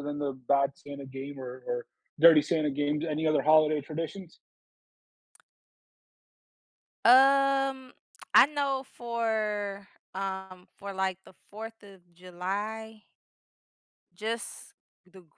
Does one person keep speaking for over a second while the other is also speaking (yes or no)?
no